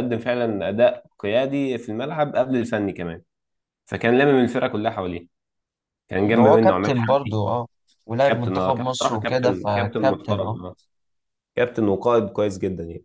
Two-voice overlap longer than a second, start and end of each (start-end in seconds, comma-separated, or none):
6.2-7.4, 8.3-10.6